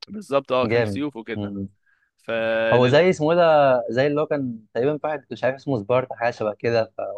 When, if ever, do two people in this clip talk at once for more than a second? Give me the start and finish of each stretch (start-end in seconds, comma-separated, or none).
none